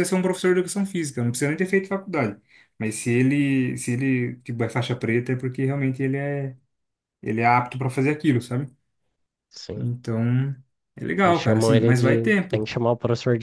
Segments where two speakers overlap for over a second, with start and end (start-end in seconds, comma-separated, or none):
11.2-12.7